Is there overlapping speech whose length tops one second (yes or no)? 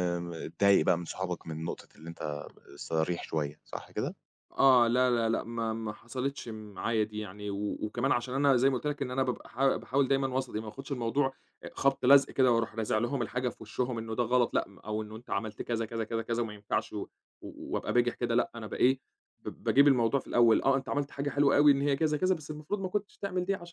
no